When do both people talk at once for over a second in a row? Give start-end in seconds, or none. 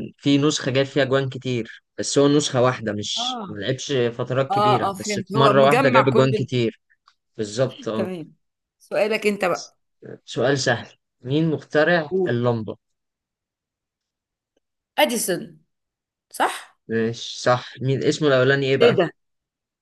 4.5-6.5